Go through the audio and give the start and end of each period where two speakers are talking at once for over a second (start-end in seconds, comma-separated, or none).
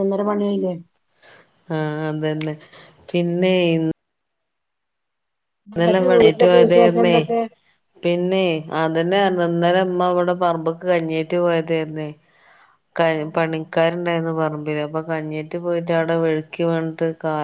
5.8-7.2